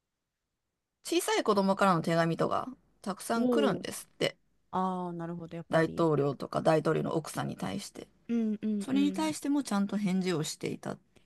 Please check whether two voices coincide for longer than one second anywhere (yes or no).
no